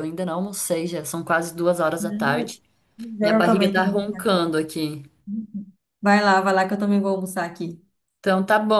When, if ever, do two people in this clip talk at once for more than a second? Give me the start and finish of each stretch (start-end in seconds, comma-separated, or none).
3.2-4.5